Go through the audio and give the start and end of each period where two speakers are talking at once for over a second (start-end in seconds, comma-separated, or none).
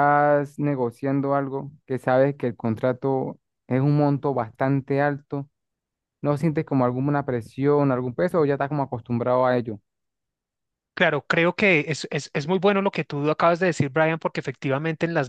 none